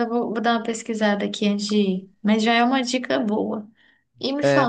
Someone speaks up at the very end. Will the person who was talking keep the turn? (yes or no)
yes